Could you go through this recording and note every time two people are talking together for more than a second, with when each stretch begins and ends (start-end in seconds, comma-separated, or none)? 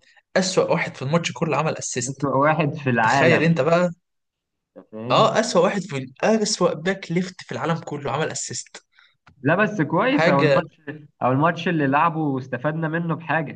none